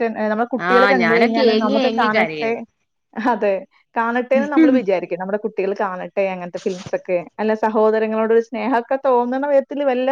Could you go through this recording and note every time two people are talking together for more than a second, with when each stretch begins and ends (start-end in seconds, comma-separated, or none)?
0.7-2.5